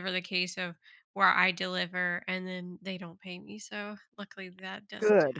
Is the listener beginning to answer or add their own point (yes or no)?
yes